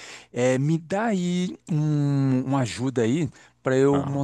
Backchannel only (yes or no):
yes